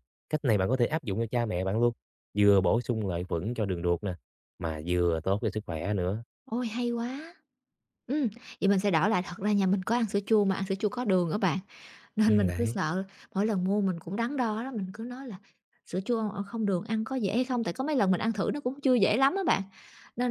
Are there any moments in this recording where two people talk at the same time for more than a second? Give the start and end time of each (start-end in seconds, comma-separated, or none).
none